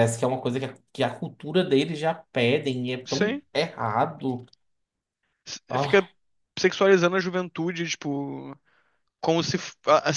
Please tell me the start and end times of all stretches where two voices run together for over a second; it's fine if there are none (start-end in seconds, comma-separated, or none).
none